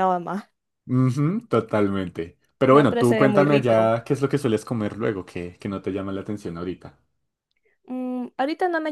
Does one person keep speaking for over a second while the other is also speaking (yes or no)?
yes